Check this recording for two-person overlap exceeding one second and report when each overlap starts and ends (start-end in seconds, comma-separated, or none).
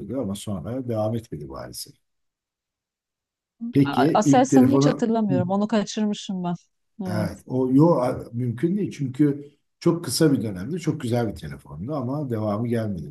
3.8-5.1